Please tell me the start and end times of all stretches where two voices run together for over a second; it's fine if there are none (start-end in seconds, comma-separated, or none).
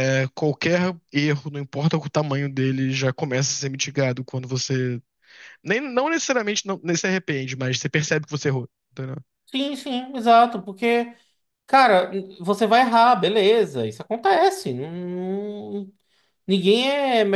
none